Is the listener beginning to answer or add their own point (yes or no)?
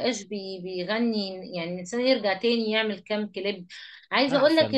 no